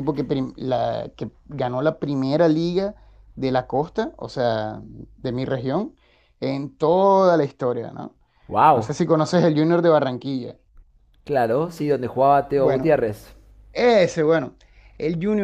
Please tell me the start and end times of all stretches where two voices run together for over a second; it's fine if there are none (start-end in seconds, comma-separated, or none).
none